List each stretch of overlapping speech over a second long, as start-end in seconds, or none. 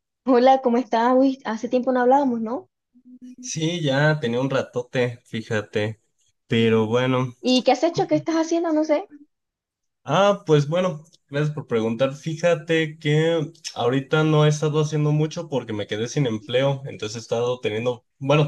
none